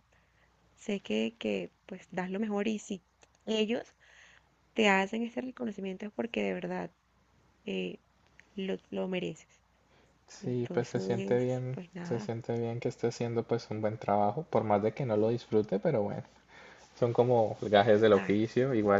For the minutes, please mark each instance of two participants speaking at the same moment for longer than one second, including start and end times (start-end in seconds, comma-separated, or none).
10.4-12.3